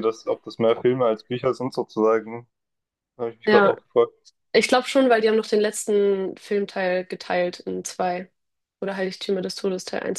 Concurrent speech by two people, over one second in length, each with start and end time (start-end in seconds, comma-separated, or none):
none